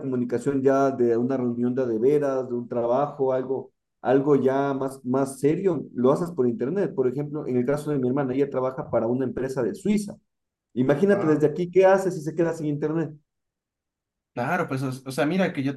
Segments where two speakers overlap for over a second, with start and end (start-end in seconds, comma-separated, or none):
none